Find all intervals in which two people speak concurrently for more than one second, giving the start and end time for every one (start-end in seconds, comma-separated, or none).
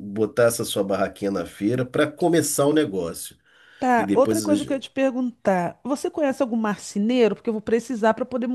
none